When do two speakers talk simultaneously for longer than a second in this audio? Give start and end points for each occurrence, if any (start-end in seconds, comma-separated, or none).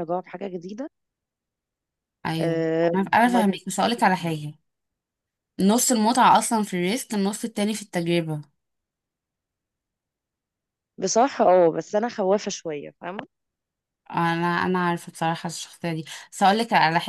2.4-4.3